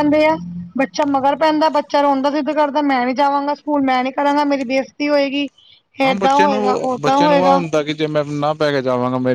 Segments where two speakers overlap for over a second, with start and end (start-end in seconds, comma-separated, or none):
6.1-7.6